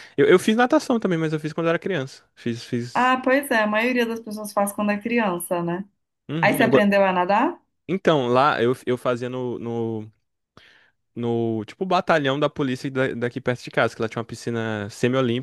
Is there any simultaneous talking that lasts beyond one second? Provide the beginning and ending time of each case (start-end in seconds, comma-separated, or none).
none